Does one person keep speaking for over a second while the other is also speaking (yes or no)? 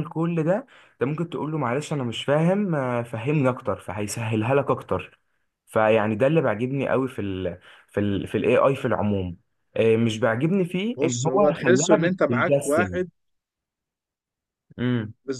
yes